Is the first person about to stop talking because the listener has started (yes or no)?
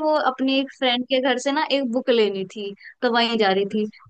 no